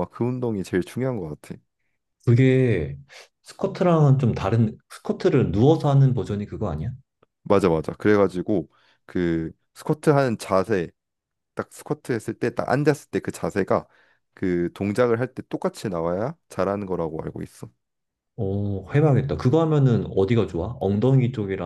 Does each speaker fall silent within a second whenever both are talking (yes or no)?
yes